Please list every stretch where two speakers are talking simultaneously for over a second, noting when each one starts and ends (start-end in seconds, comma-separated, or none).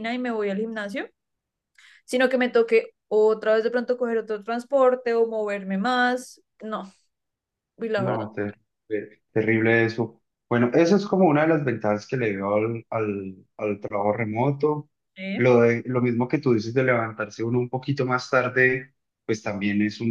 none